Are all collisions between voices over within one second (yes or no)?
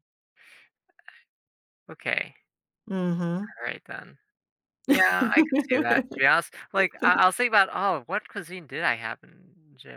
no